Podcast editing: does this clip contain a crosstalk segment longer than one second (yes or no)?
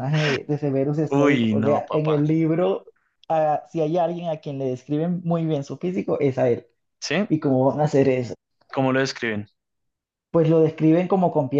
yes